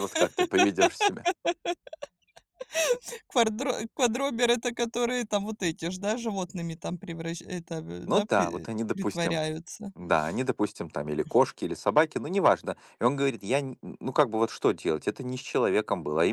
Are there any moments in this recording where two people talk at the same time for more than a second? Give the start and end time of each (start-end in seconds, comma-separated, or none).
8.1-9.4